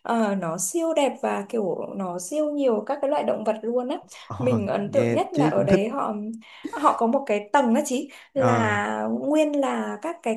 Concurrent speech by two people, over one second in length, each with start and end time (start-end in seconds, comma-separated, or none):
4.4-5.8